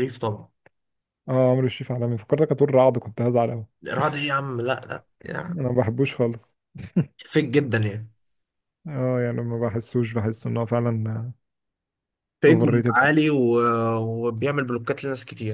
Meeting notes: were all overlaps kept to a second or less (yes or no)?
yes